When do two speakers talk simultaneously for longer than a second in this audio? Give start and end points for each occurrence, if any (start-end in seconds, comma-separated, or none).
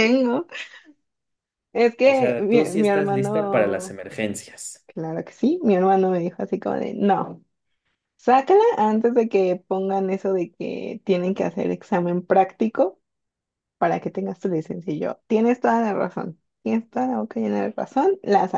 2.0-4.0